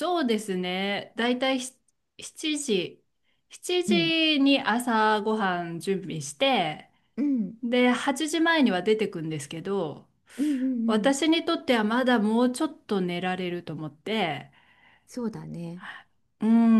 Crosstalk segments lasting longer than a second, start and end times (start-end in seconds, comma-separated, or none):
none